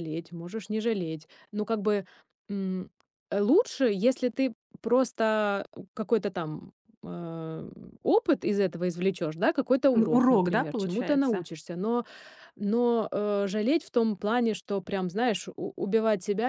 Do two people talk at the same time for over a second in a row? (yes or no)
yes